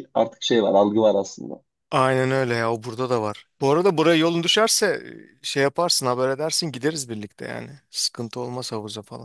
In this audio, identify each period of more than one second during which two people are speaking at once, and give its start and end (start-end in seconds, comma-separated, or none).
none